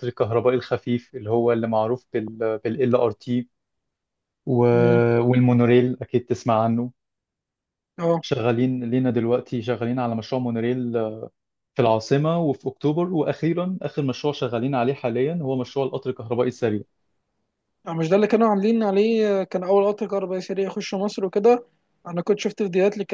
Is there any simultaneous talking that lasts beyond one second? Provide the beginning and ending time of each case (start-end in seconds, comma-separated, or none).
none